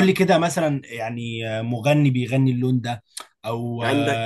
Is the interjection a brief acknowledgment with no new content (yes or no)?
no